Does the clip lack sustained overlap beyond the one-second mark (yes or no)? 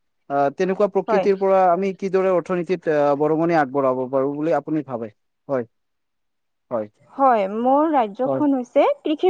yes